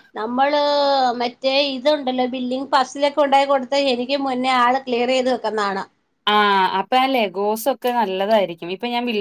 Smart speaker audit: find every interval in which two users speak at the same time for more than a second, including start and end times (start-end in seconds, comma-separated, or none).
none